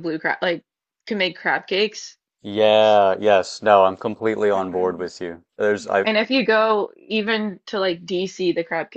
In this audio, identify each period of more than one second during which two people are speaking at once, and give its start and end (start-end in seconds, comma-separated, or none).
none